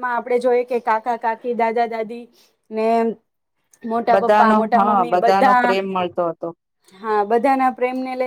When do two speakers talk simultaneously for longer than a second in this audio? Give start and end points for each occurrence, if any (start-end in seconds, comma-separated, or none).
4.1-5.8